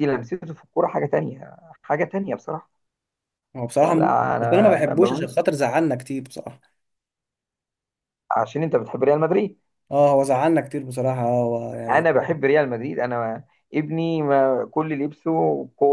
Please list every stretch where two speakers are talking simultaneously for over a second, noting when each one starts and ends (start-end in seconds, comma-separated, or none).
3.8-5.4